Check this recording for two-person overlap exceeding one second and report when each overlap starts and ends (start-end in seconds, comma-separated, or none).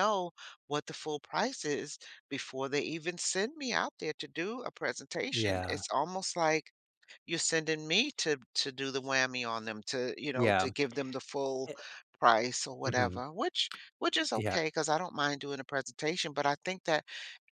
none